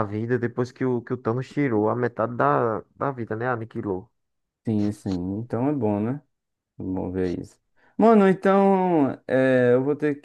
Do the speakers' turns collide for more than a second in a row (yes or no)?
no